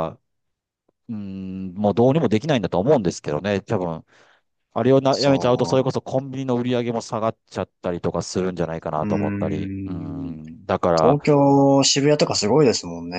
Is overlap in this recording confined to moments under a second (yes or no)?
no